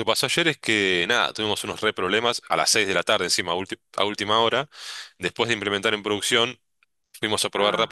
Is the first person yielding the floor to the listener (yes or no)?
no